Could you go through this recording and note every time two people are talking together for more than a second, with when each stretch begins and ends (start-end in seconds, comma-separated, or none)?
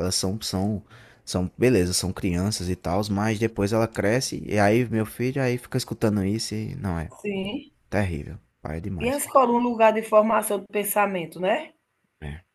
none